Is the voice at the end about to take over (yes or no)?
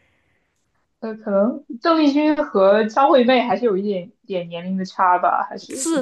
yes